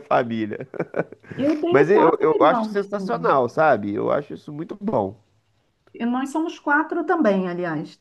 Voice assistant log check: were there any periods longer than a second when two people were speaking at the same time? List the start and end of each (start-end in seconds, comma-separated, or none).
1.7-3.3